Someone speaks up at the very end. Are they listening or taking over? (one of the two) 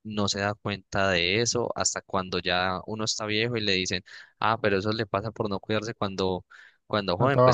listening